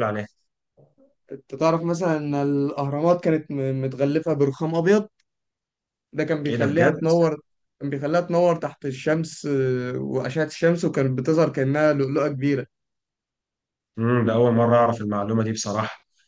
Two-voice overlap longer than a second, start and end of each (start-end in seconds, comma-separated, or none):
none